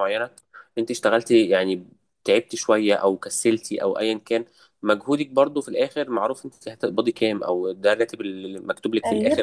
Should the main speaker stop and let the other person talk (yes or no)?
no